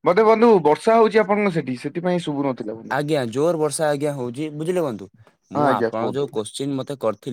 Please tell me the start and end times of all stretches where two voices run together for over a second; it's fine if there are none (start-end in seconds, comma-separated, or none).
none